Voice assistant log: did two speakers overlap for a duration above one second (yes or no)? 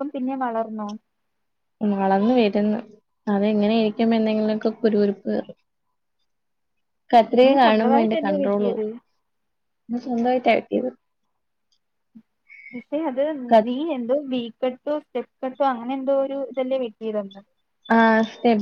yes